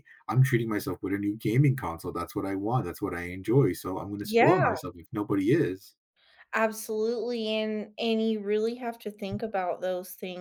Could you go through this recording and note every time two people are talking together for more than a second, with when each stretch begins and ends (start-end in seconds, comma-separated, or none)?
none